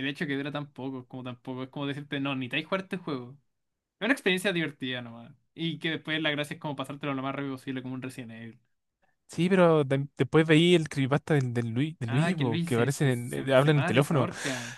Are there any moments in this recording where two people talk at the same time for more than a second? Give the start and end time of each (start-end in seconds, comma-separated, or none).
12.1-14.3